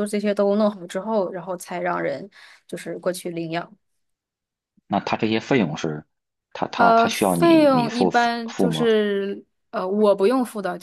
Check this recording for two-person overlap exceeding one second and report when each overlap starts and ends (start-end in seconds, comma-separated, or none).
6.8-8.9